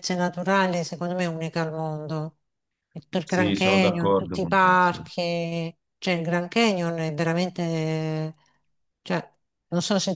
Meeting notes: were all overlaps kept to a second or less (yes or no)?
no